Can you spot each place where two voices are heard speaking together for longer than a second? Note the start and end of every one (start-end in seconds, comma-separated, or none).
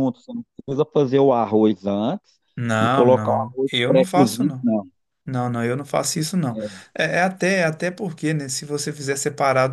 2.8-4.7